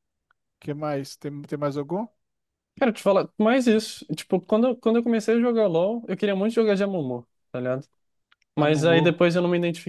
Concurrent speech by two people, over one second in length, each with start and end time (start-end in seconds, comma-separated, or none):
none